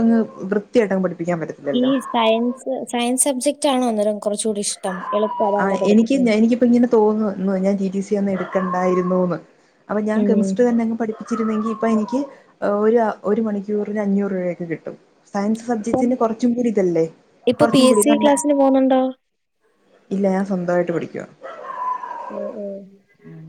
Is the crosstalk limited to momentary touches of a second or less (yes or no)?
yes